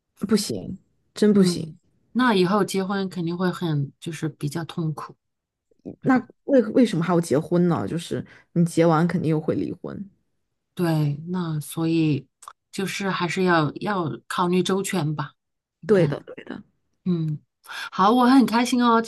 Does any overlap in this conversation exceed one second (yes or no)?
no